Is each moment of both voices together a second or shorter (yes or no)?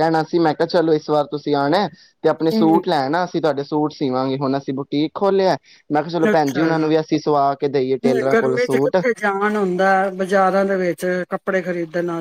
no